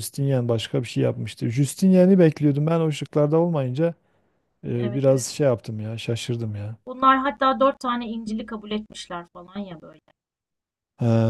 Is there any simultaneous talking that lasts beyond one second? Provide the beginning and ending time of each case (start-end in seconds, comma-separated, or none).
none